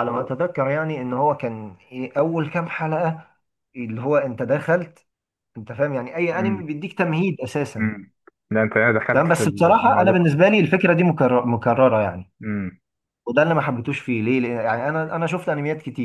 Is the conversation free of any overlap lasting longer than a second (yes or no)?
no